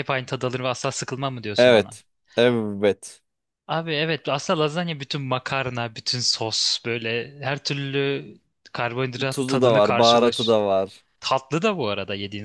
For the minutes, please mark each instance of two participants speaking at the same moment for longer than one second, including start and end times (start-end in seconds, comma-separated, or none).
9.3-10.6